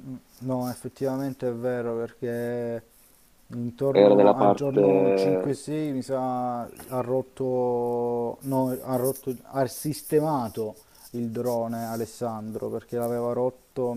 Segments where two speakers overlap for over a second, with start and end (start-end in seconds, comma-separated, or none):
3.9-5.6